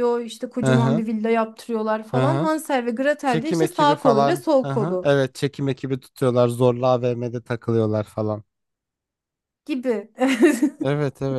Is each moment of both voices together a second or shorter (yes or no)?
no